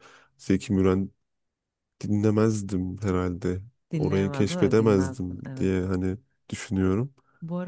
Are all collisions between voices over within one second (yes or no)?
no